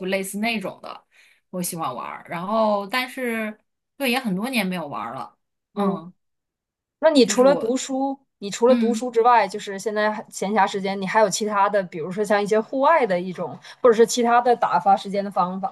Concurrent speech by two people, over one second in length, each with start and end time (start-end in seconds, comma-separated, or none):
none